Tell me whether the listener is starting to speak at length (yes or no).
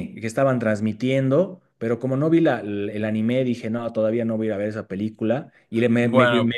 no